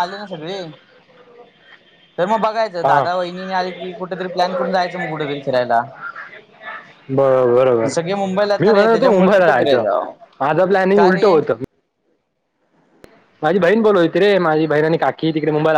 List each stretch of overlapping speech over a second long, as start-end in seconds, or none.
8.6-9.8